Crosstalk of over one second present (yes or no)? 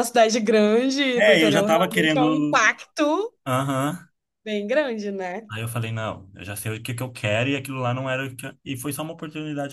yes